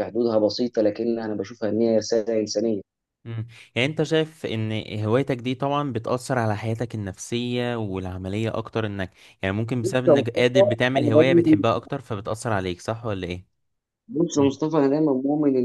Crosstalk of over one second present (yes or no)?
yes